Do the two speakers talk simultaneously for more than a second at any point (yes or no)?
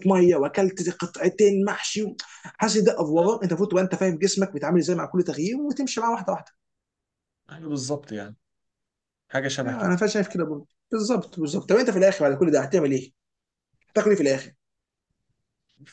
no